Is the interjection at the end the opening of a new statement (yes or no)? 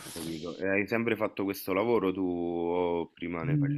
yes